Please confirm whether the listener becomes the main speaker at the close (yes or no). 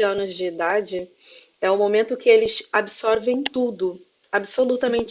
no